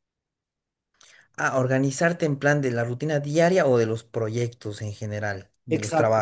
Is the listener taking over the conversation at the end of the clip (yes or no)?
yes